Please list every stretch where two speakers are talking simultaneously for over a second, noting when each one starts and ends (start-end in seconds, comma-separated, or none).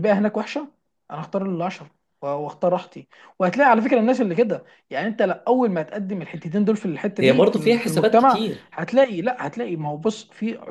7.2-8.7